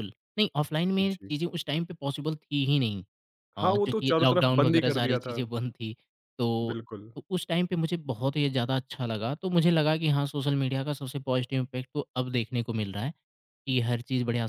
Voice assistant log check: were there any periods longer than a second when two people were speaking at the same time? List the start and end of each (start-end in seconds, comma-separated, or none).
3.6-5.4